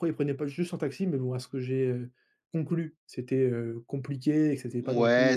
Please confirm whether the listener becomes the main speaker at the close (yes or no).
yes